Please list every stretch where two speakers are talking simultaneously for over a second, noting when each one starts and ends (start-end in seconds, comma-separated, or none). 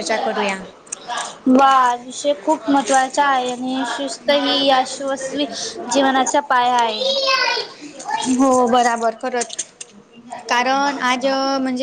none